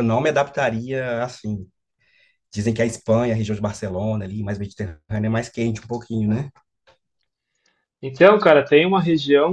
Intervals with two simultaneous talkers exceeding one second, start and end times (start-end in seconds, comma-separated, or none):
none